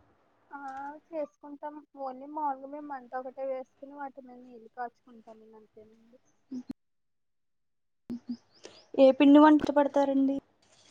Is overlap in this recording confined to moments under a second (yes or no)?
yes